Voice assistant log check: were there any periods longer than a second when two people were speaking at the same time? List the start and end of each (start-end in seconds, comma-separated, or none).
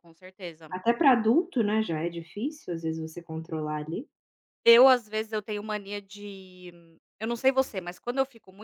none